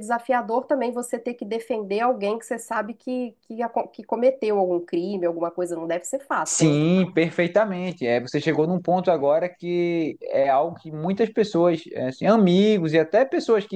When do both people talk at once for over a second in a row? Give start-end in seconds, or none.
none